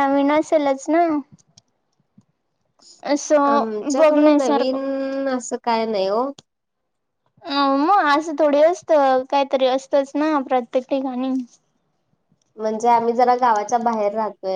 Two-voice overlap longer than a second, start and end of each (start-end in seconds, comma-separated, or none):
3.5-4.8